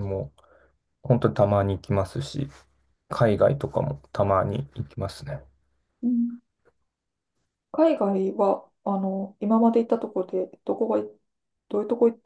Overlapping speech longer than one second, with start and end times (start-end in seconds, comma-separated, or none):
none